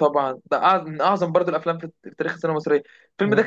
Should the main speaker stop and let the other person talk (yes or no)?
no